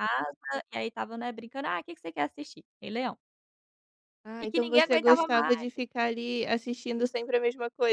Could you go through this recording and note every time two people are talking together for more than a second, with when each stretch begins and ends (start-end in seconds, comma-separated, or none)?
4.4-5.7